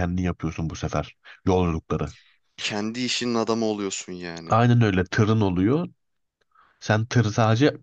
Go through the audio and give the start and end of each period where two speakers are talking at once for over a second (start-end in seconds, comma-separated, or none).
none